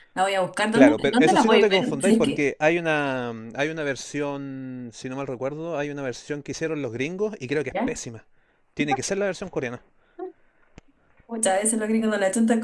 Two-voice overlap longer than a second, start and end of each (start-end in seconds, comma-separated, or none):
0.7-2.5